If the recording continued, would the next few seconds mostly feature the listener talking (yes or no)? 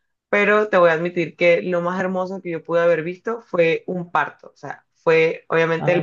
no